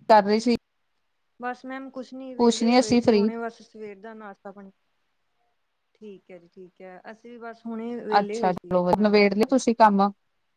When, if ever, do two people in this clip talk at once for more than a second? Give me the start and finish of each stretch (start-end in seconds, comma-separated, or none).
8.2-9.5